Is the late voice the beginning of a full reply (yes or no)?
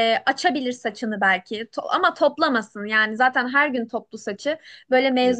no